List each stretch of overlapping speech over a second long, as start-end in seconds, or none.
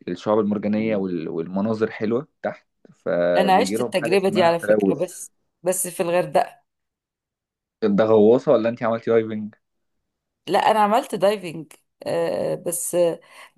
3.4-5.1